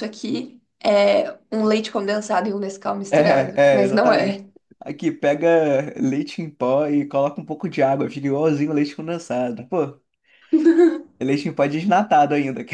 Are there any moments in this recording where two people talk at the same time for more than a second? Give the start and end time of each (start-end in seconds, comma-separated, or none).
3.1-4.5